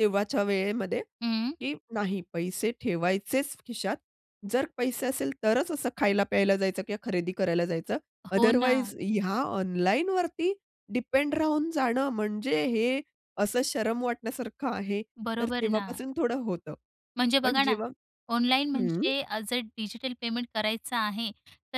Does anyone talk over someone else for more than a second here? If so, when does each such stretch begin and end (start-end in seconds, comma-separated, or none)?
none